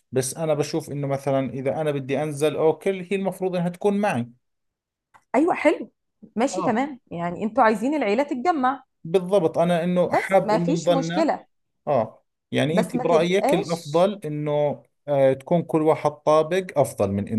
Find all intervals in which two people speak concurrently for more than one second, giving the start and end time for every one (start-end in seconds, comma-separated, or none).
10.1-11.3, 12.7-14.0